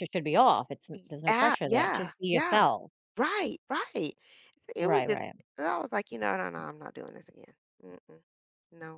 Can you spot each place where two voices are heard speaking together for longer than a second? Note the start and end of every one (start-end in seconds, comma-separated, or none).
1.3-2.6